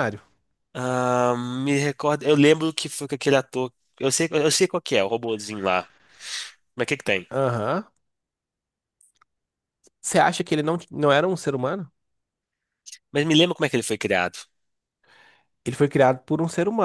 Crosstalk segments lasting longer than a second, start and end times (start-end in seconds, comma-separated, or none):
none